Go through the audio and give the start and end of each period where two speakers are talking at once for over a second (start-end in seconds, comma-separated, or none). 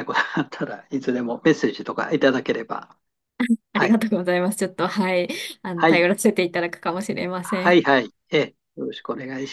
none